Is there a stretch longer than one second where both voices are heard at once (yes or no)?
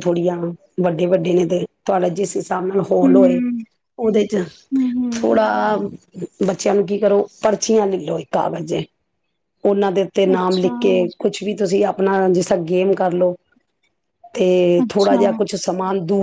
no